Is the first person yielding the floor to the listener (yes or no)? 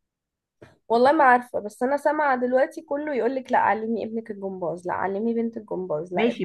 yes